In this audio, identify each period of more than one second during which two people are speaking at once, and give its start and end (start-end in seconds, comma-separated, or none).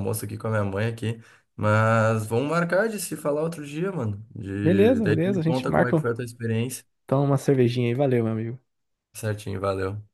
4.6-6.0